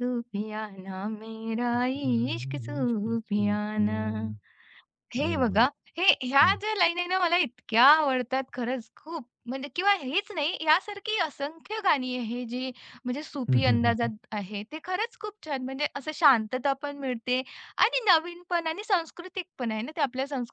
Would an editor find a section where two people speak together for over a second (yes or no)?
yes